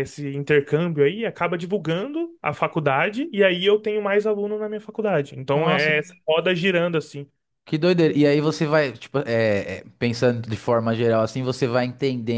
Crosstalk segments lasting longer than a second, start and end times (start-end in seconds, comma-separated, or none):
none